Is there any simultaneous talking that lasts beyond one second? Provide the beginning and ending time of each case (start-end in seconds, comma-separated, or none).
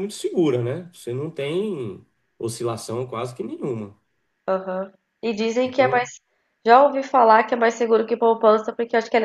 none